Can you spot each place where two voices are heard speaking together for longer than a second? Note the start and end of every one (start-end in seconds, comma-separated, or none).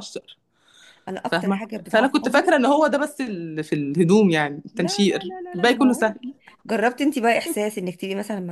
1.3-2.5, 4.7-6.2